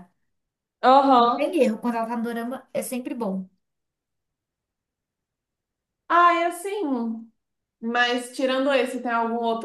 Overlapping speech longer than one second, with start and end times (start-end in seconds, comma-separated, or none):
none